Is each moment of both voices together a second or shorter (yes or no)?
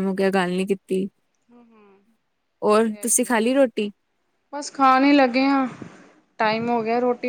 yes